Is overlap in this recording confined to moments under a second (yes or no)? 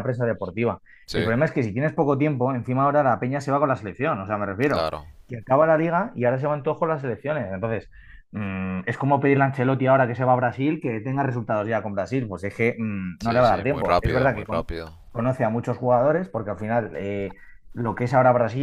no